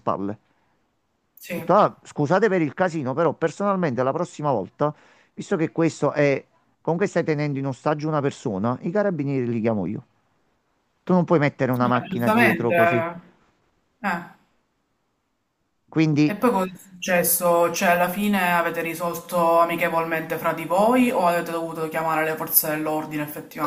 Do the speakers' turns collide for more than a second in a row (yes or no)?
yes